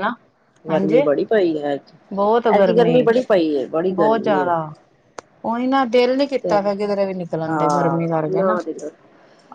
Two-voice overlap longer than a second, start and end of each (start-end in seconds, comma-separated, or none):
none